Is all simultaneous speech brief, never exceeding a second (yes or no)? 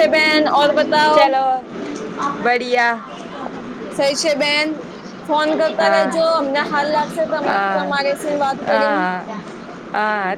yes